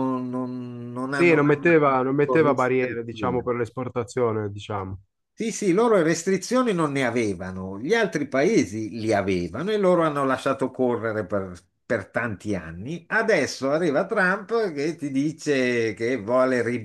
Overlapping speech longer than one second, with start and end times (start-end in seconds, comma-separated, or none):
1.1-3.5